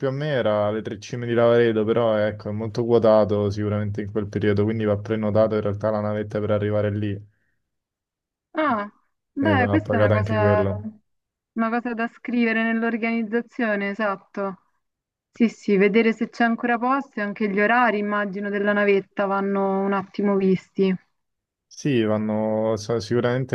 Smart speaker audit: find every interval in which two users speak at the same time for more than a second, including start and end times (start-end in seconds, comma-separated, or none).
9.4-10.6